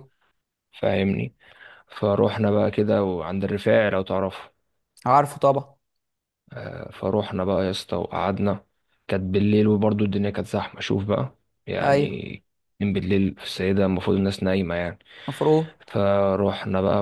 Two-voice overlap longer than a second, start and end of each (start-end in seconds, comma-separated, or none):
none